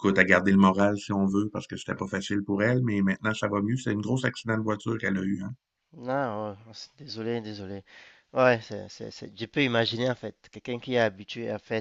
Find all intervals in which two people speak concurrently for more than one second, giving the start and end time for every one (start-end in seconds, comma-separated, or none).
none